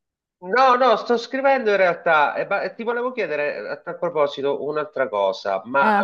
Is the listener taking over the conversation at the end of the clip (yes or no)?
no